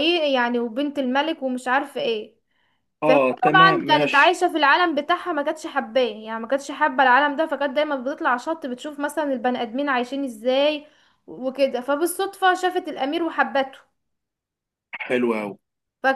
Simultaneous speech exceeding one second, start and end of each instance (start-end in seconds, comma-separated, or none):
3.0-4.4